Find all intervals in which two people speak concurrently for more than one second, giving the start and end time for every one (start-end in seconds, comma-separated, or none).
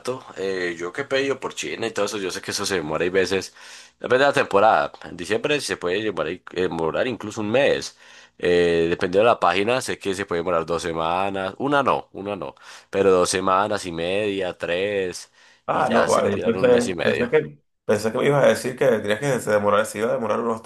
15.7-17.3